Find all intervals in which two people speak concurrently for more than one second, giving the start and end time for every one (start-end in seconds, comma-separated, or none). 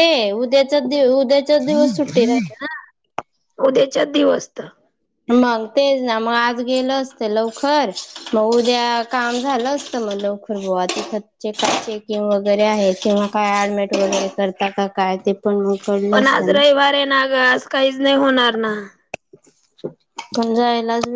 none